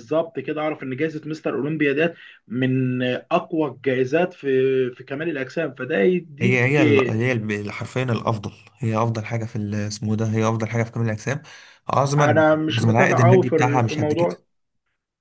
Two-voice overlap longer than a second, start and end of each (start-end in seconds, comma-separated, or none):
12.2-14.3